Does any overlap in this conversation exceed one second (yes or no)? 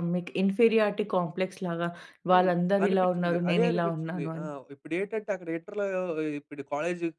yes